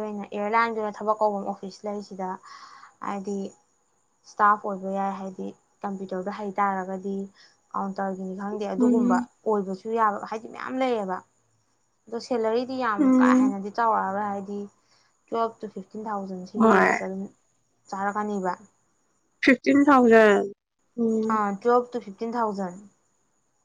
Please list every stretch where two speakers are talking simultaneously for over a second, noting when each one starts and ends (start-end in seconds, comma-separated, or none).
none